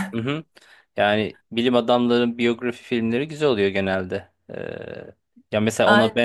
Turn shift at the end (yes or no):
no